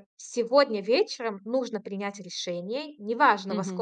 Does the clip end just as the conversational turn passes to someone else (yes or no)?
no